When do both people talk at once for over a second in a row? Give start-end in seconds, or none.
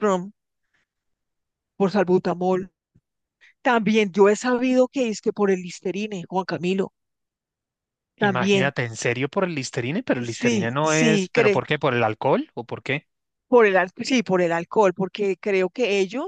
10.2-11.6